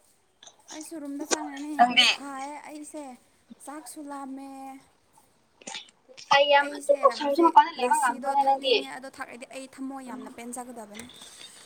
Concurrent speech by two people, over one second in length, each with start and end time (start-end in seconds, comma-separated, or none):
6.6-8.7